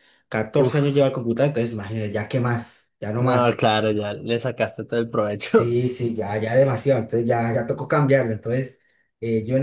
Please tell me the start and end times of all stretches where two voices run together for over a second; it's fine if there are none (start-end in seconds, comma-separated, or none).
none